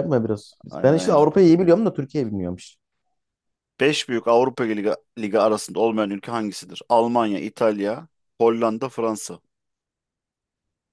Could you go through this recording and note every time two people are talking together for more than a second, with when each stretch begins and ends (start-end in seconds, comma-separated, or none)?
none